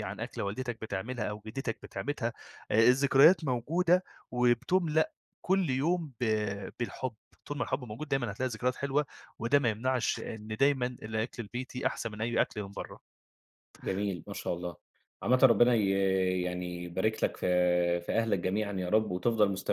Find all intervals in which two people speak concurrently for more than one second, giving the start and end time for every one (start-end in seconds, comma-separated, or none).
none